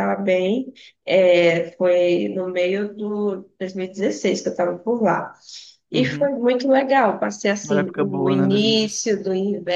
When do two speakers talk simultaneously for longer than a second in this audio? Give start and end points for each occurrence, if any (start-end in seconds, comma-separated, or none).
7.6-9.1